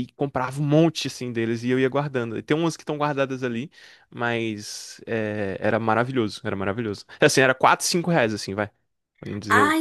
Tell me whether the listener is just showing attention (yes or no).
no